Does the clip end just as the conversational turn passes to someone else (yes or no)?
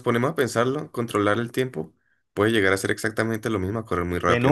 yes